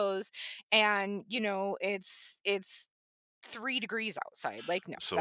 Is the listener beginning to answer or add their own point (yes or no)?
yes